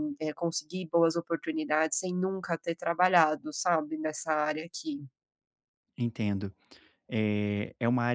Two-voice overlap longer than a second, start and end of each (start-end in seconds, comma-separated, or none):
none